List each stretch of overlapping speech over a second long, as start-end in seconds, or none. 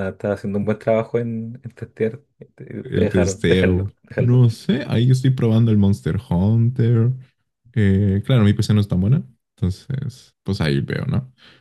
2.8-4.4